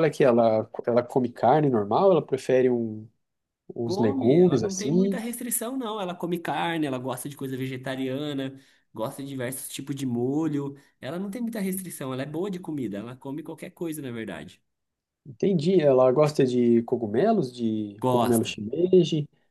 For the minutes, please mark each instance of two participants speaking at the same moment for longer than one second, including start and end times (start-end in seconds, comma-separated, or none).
3.8-5.2